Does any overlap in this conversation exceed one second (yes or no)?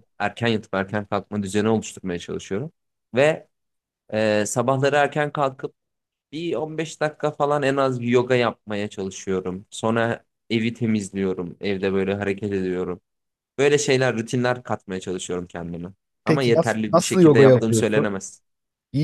yes